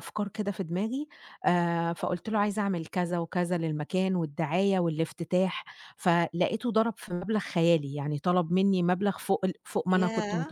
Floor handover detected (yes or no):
yes